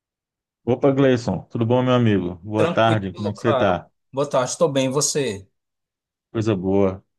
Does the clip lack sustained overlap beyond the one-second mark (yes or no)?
no